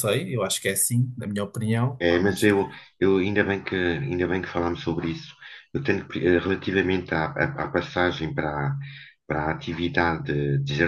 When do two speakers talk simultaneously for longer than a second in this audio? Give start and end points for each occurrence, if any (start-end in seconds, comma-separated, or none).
none